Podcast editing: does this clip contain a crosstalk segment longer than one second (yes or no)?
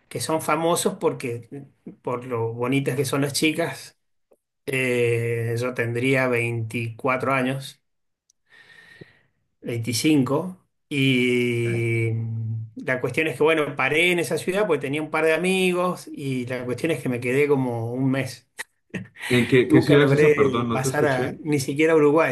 yes